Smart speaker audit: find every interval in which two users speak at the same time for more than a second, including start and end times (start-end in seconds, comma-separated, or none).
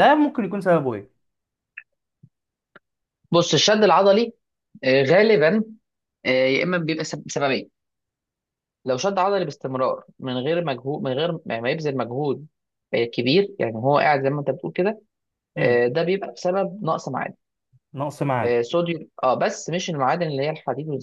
none